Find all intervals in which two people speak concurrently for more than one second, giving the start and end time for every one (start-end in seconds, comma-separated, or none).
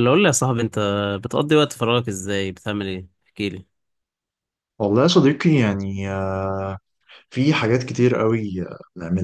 none